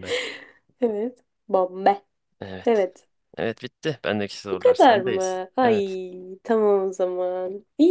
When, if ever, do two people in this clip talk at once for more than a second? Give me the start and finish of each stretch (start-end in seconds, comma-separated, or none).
4.5-6.0